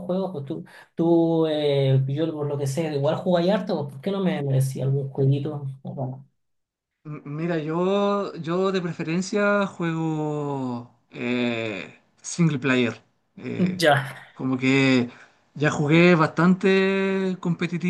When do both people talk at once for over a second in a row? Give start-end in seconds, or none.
none